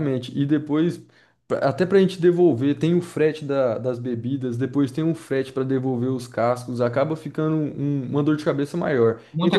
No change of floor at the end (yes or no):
no